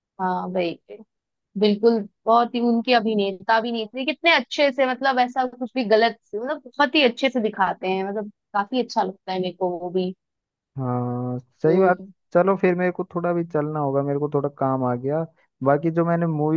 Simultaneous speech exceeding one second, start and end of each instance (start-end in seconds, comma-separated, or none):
none